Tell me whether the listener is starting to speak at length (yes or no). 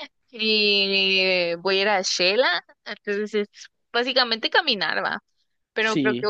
no